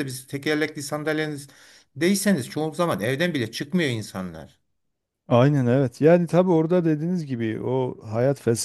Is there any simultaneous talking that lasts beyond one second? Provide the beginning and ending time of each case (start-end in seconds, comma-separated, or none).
none